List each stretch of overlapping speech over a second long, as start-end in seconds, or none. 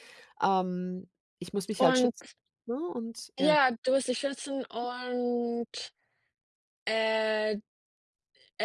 none